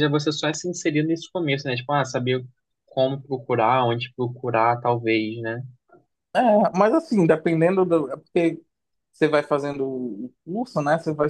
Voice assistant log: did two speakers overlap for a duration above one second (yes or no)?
no